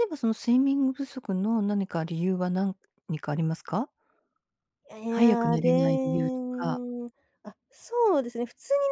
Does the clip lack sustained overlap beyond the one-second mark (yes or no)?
no